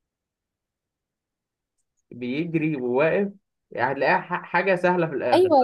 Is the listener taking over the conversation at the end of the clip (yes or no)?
yes